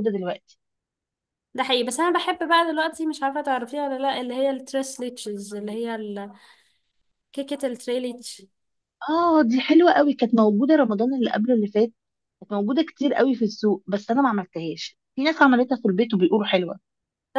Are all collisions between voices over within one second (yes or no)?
yes